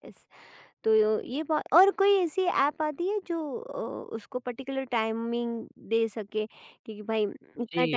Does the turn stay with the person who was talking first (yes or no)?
no